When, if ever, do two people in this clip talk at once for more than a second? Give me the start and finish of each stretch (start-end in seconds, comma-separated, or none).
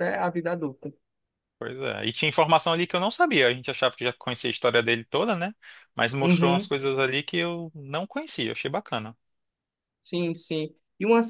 none